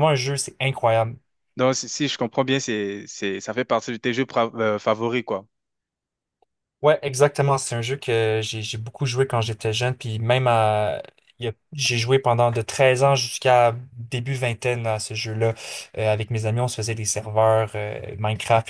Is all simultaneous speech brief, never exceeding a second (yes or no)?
yes